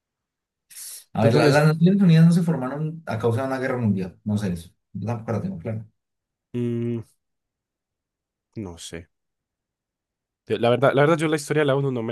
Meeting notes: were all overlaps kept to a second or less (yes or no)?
yes